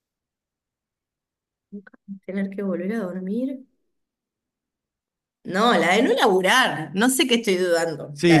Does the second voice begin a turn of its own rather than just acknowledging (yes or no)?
yes